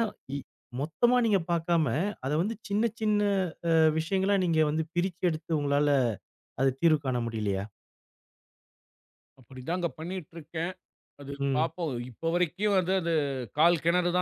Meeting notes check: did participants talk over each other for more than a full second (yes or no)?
no